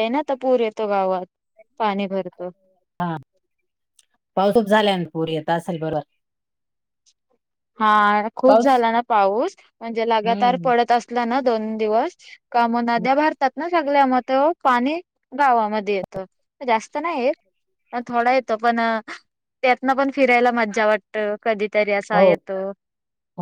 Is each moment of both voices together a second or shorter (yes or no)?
yes